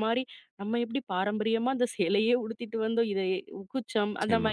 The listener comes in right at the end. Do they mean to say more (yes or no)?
no